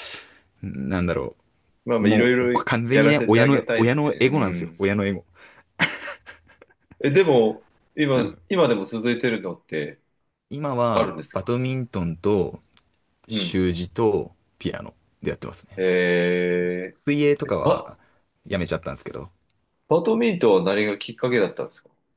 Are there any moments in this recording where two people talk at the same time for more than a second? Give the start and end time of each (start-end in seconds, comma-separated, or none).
2.0-4.8